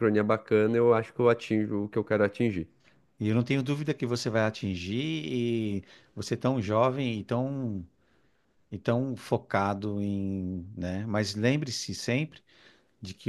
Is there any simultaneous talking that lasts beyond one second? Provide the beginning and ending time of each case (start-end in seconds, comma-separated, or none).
none